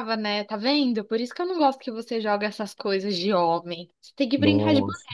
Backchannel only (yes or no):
yes